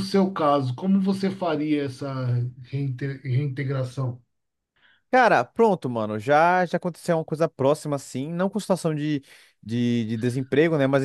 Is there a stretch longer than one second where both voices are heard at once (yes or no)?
no